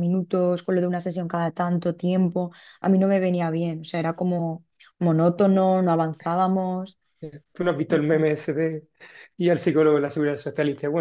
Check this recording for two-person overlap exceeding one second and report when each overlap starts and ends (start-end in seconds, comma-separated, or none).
none